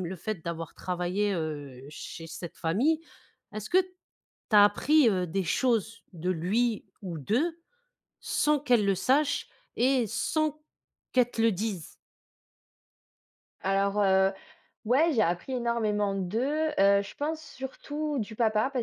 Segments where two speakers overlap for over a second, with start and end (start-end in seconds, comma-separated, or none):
none